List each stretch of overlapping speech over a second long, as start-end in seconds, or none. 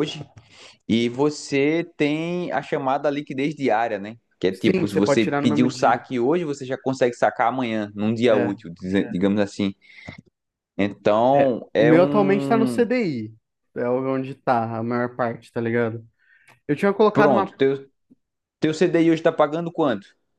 4.5-6.0, 11.3-12.9